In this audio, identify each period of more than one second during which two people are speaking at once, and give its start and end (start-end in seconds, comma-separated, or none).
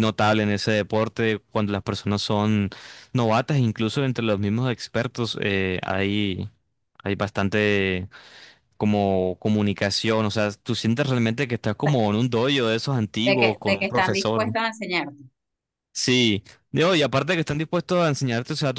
13.2-14.6